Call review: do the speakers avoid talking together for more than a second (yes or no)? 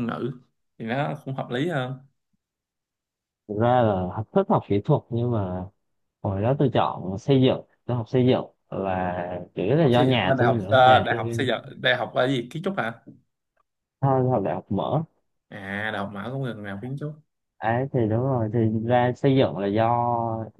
no